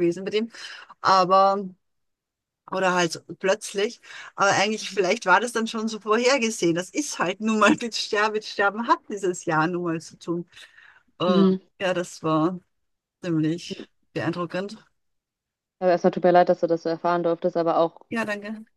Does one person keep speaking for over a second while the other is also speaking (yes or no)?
no